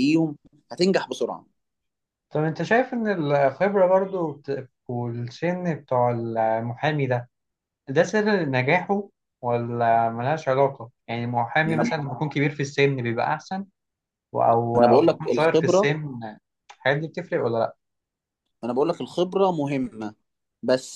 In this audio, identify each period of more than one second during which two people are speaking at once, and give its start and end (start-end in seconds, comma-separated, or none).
14.8-15.9